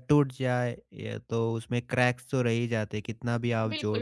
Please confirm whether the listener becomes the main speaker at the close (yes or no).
yes